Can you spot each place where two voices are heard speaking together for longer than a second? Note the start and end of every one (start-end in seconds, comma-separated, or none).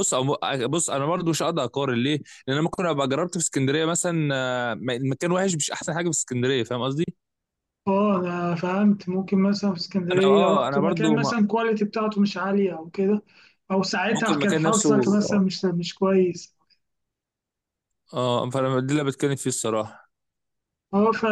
10.1-11.3, 14.1-15.4